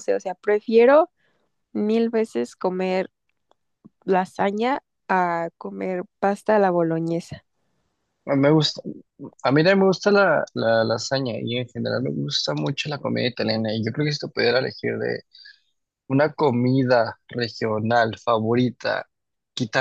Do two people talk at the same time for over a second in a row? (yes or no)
no